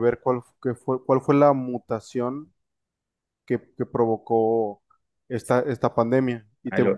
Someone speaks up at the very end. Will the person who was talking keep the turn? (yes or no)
yes